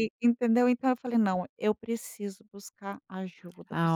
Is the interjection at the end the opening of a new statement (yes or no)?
yes